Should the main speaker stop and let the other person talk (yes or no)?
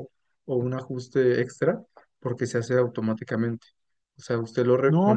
yes